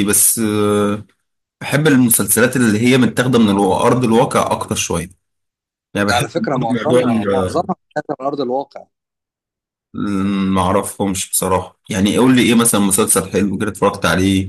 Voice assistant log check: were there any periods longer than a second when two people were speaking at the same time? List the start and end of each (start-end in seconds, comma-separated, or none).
6.1-7.7